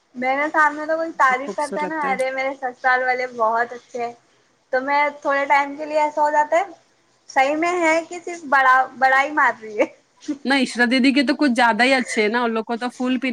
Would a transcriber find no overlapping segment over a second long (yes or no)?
yes